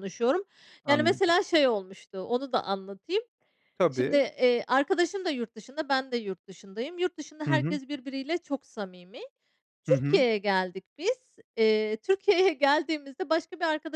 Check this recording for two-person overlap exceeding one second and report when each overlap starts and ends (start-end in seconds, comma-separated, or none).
none